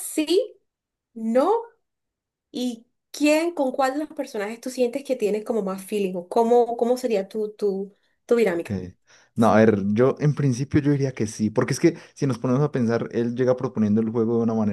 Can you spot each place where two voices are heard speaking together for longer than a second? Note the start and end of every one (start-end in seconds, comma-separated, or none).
none